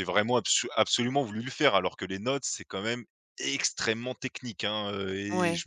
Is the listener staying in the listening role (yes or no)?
yes